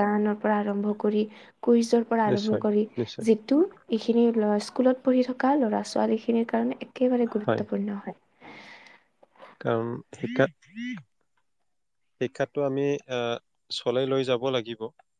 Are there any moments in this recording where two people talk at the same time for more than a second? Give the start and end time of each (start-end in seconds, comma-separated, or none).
none